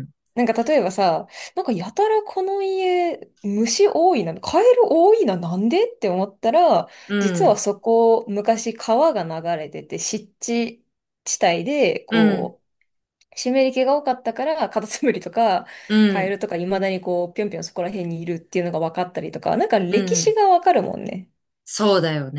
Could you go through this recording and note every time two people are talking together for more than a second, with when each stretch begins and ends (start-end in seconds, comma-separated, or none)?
none